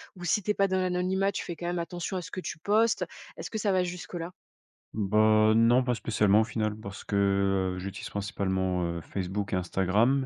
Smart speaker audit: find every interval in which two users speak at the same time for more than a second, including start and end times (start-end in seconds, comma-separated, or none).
none